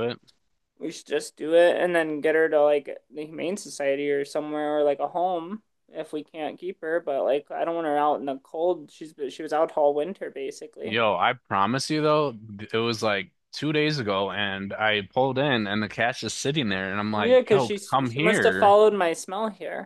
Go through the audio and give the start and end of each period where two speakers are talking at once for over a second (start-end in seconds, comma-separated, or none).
17.1-18.8